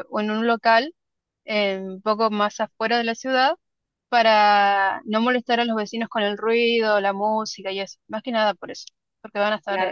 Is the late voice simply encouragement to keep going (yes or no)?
no